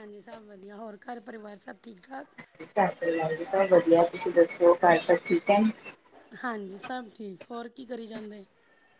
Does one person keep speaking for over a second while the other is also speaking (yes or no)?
no